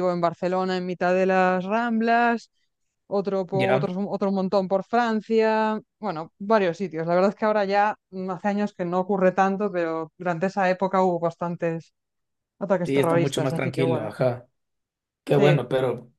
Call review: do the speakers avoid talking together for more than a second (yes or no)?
no